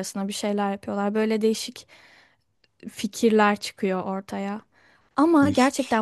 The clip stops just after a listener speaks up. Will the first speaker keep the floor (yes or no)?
yes